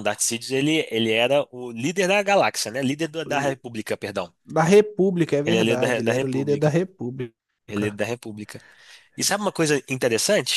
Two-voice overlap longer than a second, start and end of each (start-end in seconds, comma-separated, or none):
5.5-6.8